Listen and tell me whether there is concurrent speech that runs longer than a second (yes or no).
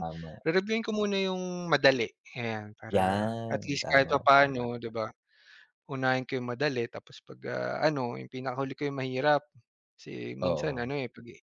yes